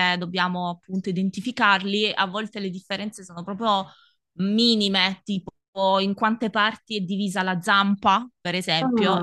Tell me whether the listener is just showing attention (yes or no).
yes